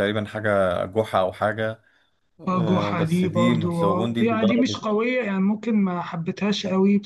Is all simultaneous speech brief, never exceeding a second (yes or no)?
no